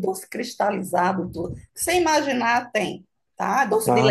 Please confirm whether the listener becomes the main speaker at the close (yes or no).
no